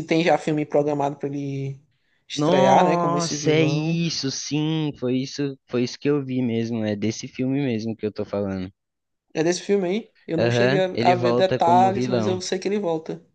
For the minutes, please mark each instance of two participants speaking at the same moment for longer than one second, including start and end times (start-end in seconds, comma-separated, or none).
2.3-4.0, 10.4-12.4